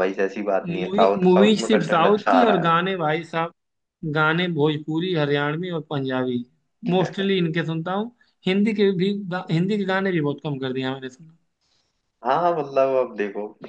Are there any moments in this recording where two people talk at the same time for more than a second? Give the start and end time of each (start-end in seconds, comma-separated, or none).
0.7-2.8